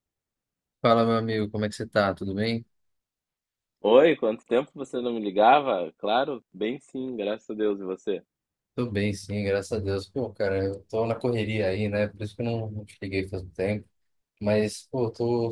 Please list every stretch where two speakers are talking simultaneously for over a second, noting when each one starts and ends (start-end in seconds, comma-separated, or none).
none